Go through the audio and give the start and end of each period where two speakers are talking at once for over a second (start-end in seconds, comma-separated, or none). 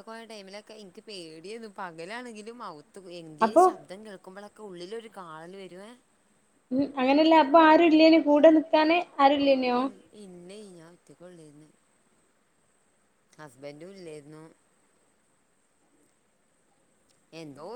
none